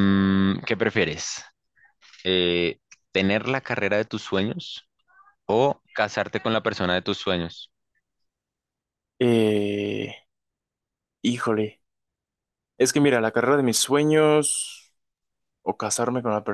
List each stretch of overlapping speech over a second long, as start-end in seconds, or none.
none